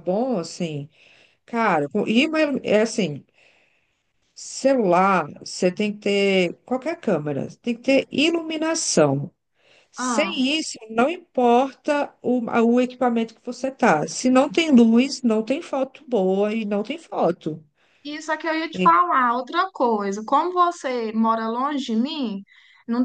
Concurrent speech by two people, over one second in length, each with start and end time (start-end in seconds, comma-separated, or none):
none